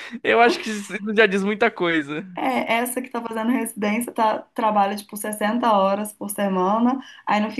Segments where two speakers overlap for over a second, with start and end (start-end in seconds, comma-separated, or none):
none